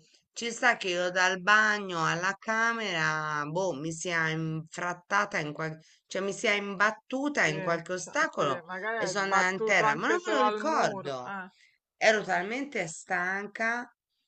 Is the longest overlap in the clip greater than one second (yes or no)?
yes